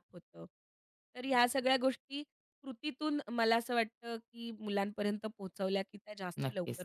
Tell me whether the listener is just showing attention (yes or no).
no